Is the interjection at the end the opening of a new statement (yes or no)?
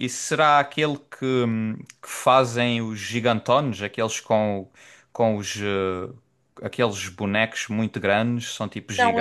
yes